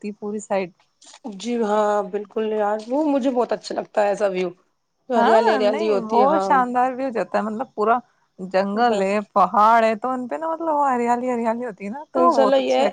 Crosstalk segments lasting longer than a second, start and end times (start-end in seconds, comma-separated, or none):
5.2-6.5